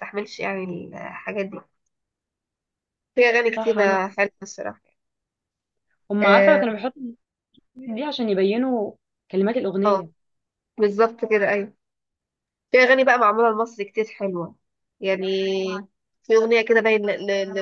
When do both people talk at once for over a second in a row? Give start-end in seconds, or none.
none